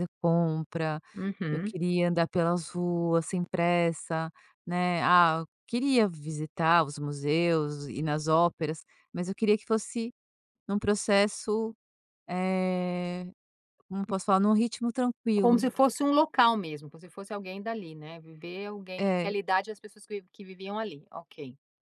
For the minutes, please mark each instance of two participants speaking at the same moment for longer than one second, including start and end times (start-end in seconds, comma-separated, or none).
none